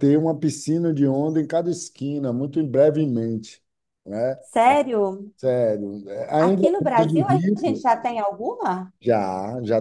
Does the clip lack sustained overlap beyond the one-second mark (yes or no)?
no